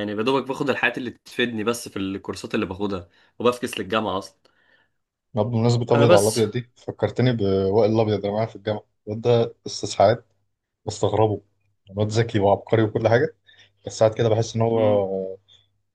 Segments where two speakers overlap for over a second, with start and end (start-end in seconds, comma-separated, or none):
none